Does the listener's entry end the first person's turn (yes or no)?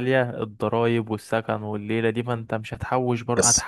no